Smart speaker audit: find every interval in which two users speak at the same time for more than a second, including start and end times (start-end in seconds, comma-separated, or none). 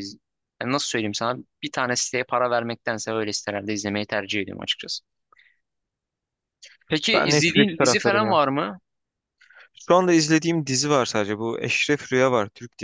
7.1-8.4